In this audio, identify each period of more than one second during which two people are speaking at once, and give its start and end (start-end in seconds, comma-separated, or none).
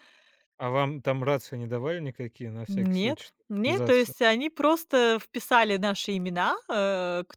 2.7-4.1